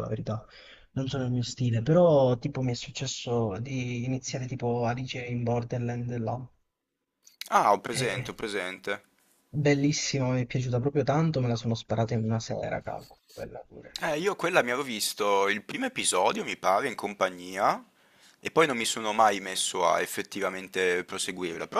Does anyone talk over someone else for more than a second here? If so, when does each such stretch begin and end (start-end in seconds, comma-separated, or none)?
none